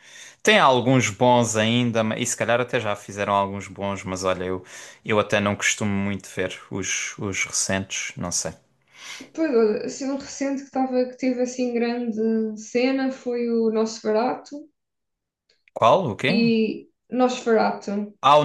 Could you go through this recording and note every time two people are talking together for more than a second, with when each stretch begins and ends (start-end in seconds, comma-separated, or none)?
none